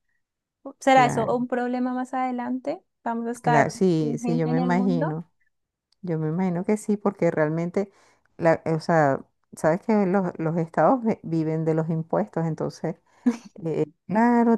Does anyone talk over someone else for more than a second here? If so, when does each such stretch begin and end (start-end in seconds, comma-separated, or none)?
3.4-5.2